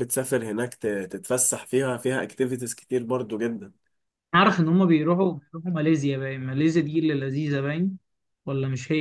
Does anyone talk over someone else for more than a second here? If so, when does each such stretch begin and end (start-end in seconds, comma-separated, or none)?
none